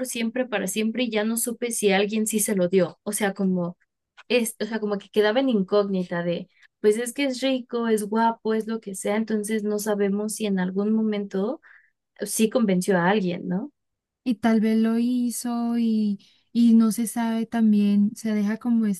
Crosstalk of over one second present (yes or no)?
no